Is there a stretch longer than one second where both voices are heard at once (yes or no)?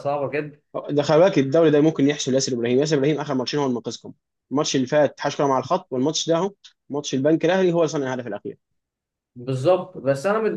no